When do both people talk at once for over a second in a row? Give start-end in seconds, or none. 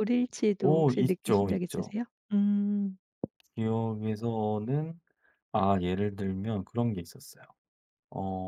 0.6-1.9